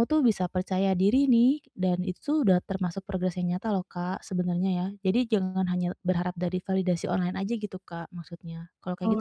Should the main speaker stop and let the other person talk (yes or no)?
yes